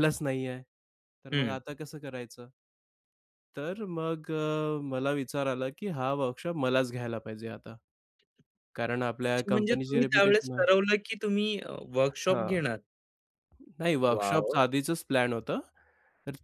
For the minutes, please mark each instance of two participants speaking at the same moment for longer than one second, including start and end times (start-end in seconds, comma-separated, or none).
9.2-10.7